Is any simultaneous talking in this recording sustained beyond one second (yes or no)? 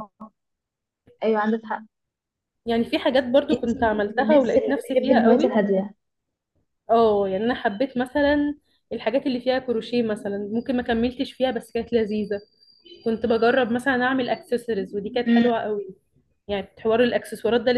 yes